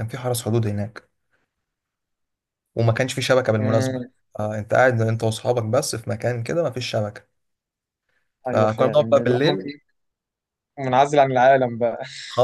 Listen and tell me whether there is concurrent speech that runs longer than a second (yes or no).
yes